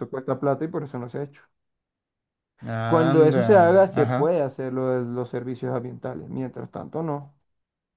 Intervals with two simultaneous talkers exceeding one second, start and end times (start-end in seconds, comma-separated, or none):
2.9-4.3